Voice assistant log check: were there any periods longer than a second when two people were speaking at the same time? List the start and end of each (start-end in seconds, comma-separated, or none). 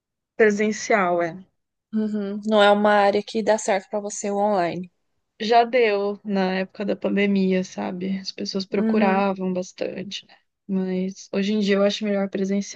none